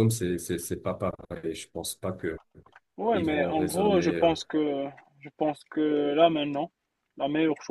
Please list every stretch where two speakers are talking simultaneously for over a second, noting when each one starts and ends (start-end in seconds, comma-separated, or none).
3.1-4.3